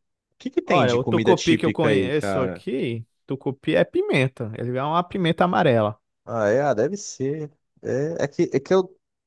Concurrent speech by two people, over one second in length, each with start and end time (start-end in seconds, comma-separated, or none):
0.6-2.6